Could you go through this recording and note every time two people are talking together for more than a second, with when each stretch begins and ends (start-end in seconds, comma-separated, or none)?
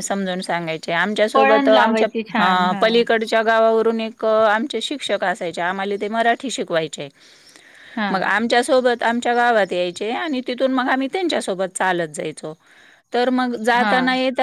1.4-2.8